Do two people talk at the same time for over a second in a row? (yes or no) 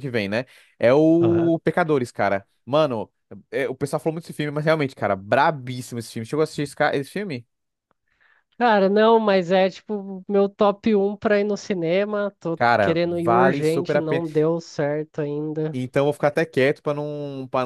yes